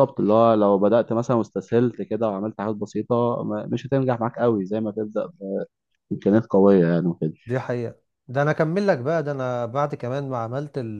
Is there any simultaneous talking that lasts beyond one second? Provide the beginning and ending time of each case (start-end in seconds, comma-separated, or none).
none